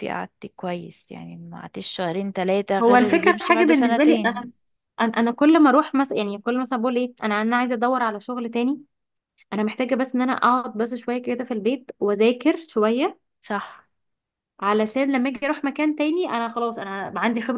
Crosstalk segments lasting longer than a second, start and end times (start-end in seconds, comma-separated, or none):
2.8-4.4